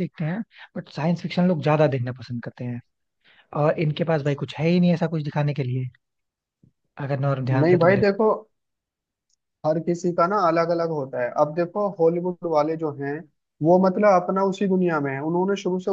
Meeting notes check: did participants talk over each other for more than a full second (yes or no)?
no